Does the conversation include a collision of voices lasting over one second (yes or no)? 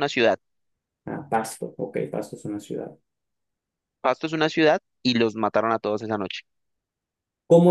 no